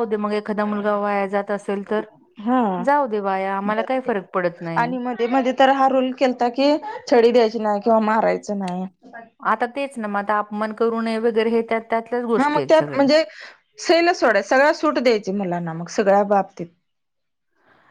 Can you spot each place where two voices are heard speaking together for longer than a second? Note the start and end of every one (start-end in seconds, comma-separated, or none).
none